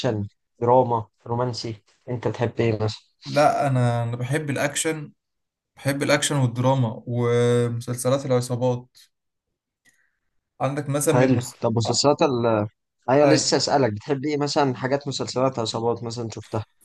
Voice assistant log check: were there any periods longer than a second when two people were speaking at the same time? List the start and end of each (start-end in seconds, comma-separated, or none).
none